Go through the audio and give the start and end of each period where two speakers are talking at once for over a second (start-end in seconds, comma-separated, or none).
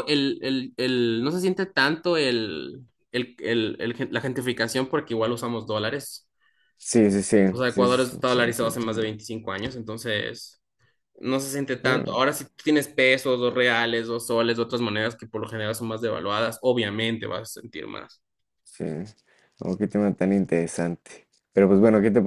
7.5-9.2